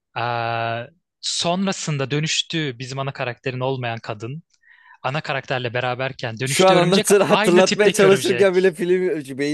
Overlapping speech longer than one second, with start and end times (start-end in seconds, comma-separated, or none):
6.4-8.7